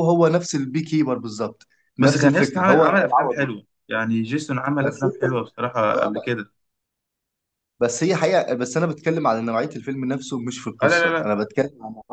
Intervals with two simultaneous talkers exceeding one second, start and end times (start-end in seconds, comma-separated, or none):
2.0-3.5